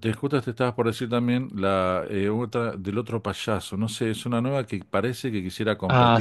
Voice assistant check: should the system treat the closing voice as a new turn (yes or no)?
yes